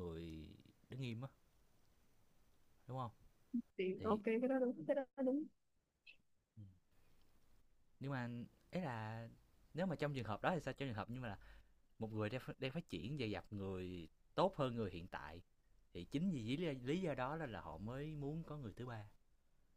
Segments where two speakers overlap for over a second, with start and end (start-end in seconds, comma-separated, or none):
none